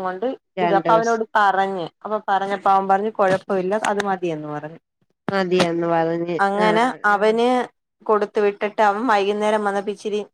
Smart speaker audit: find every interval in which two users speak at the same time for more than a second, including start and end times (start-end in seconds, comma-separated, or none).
none